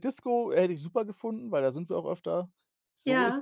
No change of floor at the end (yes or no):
no